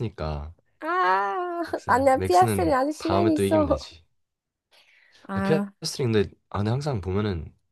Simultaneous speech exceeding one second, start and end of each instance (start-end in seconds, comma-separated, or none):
1.7-3.7